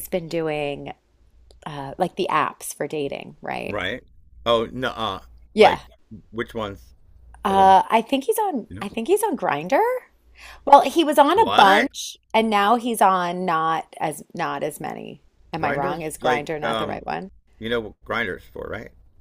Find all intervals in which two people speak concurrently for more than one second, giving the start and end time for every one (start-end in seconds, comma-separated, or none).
15.6-17.0